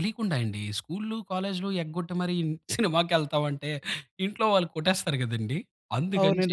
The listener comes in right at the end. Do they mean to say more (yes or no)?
no